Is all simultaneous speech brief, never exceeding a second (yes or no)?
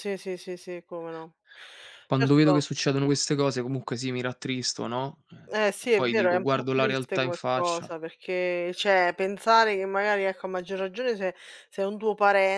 no